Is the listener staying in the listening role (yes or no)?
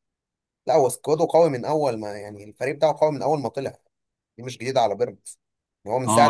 no